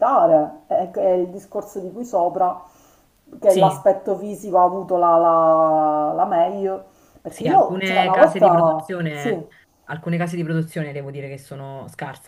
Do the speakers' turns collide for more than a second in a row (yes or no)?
yes